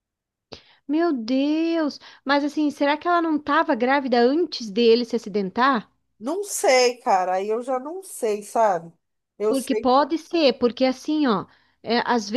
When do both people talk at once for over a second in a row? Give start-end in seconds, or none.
none